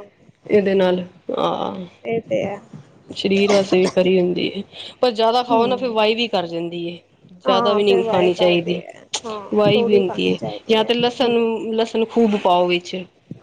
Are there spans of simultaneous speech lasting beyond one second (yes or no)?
yes